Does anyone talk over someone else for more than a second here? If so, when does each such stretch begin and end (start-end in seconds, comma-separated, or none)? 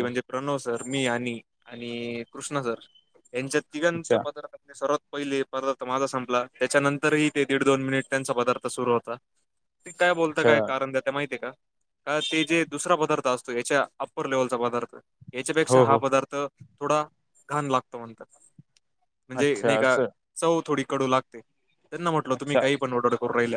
none